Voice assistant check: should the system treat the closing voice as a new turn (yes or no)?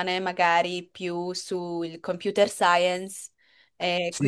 yes